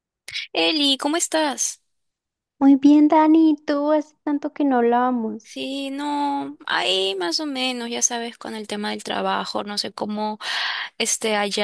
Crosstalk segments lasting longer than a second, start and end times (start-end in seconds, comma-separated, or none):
none